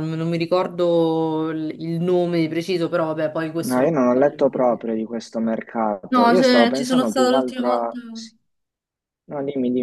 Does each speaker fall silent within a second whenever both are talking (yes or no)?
no